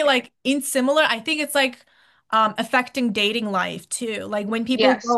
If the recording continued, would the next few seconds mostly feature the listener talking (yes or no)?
no